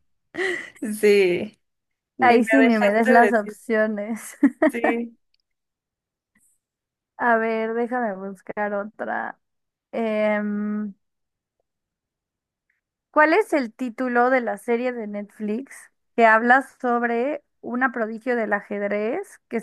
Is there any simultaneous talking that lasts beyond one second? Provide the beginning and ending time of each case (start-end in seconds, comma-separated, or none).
2.2-3.6